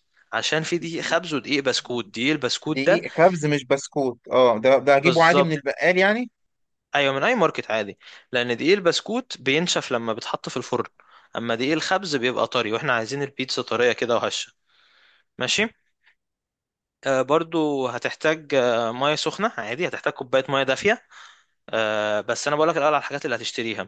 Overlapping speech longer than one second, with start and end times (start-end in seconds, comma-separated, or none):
none